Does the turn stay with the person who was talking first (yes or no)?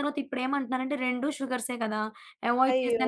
no